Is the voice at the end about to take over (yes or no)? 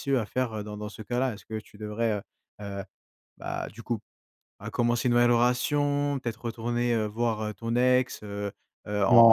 yes